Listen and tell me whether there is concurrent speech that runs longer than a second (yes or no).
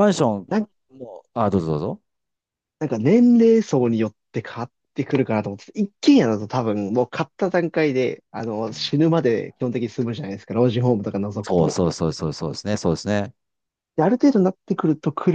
no